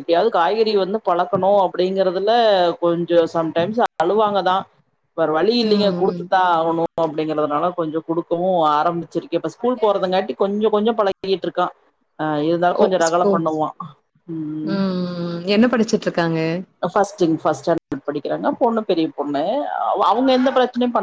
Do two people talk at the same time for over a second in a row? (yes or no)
no